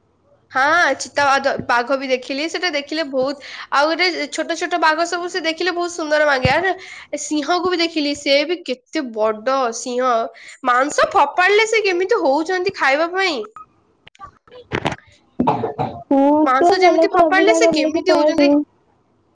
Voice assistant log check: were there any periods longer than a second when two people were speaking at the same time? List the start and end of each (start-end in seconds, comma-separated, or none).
16.5-18.6